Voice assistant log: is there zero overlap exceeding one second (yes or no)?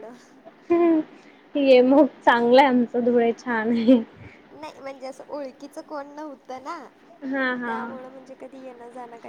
yes